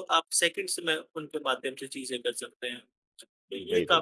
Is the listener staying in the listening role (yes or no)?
yes